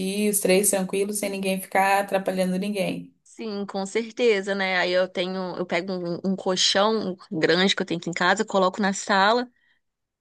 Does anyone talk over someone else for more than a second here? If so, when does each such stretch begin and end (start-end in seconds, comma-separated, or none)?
none